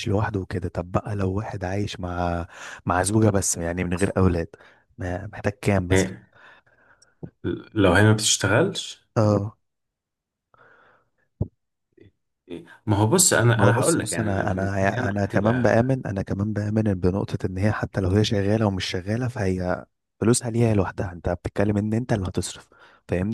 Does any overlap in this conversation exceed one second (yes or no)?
yes